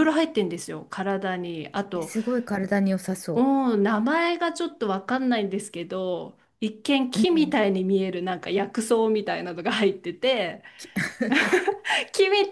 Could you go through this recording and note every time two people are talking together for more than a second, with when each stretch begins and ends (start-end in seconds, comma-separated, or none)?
none